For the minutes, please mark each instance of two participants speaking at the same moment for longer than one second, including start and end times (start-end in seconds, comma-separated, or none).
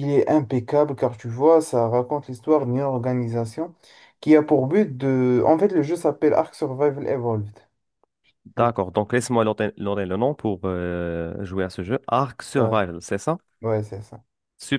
none